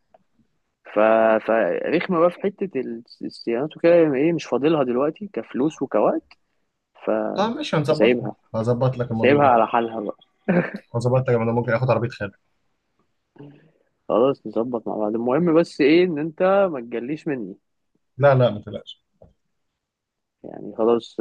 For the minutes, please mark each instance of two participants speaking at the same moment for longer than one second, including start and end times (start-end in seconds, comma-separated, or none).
none